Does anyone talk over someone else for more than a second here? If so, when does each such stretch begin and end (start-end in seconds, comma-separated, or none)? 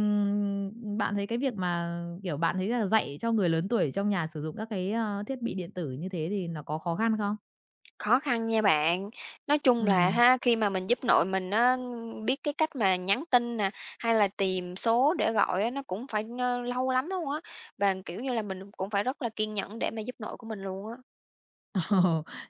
none